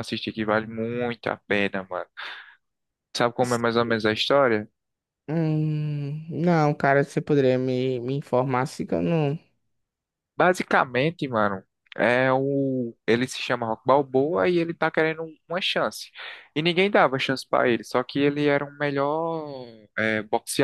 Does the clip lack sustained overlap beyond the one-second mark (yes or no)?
yes